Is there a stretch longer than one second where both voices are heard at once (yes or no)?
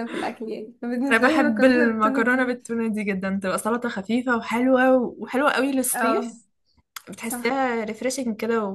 yes